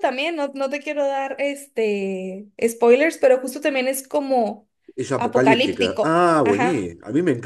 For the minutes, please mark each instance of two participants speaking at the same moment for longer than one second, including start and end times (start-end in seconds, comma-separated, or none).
5.2-6.9